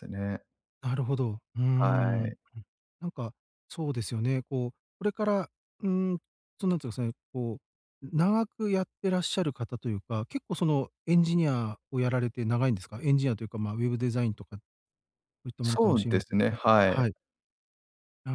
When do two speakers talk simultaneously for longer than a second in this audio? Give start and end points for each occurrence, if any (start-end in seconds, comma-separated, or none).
15.6-17.1